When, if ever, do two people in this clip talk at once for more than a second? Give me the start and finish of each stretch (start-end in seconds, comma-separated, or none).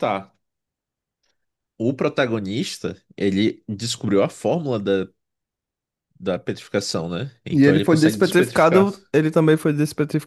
7.5-8.9